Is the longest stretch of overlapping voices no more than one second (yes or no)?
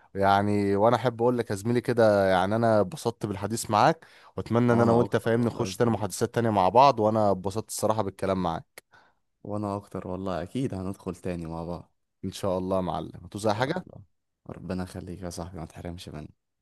no